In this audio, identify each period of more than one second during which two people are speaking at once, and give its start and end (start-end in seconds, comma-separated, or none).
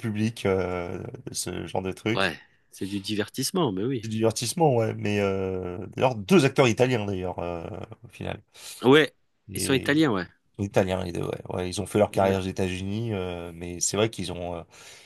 none